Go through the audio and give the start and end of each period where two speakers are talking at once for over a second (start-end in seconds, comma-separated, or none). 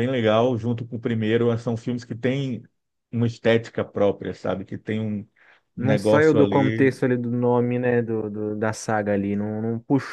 5.8-7.0